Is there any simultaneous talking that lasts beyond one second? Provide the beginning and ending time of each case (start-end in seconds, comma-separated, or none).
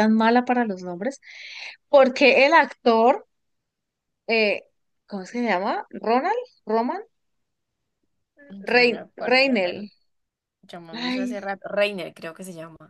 8.7-9.8